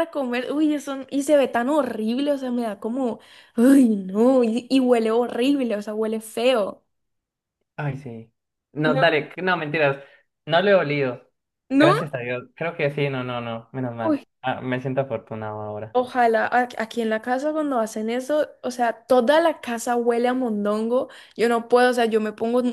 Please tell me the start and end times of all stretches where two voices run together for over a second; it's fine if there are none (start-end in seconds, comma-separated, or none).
none